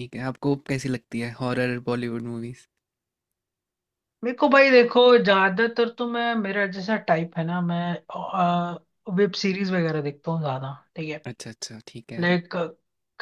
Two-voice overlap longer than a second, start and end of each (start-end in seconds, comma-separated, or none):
none